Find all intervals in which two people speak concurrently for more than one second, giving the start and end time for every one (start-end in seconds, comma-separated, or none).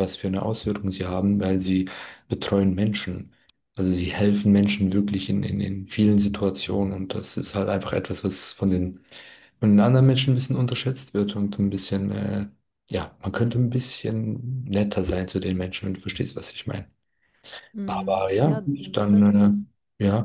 17.8-19.6